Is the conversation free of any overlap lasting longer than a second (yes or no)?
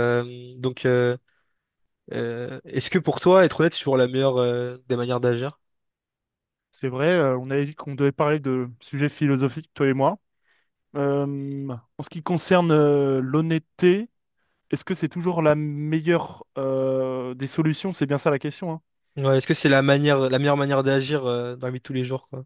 yes